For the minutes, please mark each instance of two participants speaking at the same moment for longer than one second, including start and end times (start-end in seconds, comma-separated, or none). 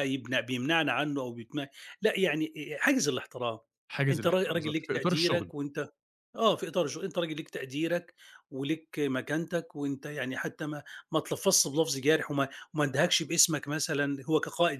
4.1-5.5